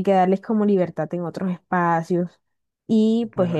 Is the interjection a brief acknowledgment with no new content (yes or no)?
no